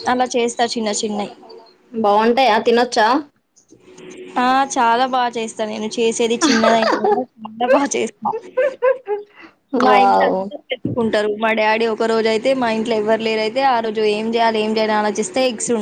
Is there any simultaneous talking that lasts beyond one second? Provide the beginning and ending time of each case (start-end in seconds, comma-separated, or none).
none